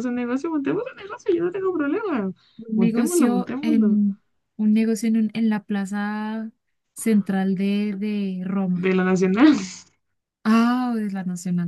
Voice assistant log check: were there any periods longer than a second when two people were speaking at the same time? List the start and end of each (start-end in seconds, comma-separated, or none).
2.7-4.0